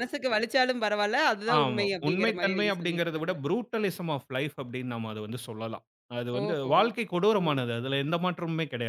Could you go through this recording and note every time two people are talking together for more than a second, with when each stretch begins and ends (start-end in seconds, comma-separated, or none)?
1.6-3.3